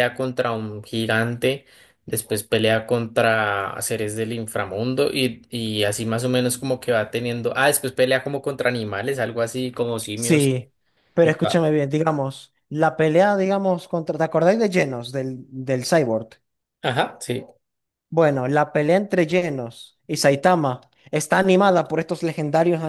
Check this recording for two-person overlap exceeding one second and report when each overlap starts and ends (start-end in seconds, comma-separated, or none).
none